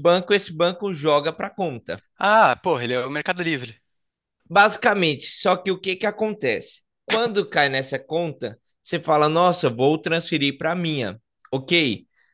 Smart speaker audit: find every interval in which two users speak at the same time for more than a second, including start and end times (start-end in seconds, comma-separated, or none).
none